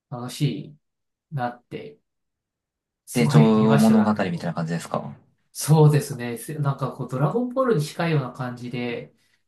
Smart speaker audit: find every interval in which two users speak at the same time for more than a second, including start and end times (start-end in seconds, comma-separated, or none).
3.1-4.5